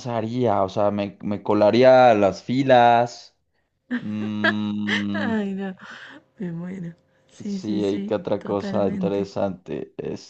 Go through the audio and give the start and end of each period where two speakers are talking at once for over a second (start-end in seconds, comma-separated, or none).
7.4-9.3